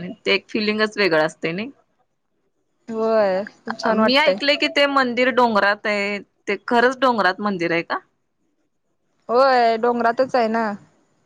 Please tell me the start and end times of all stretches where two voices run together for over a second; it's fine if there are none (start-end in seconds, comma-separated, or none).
none